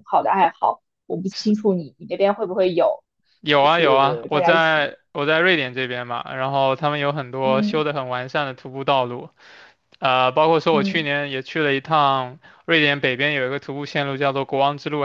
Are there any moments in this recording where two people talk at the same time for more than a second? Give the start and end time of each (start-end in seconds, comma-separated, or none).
3.6-4.9